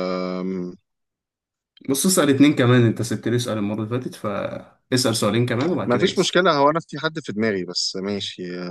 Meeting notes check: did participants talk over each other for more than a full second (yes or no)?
no